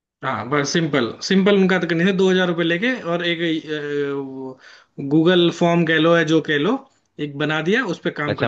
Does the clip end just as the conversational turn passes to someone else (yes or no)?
yes